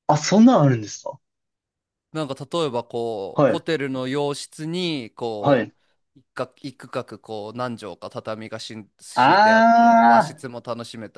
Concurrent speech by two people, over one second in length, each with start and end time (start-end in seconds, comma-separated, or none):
9.2-10.4